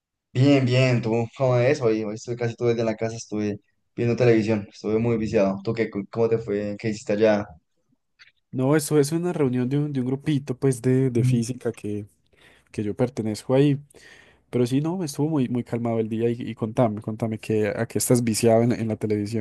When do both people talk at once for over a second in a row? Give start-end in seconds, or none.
none